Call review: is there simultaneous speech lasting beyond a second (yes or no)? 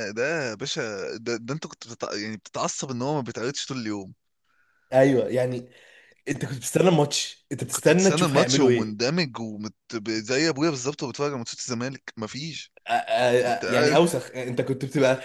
yes